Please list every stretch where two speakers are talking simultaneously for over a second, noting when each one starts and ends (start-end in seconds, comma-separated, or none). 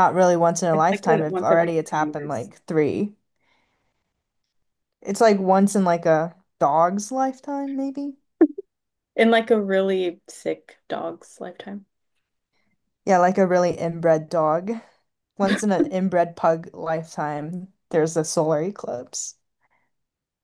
0.7-2.5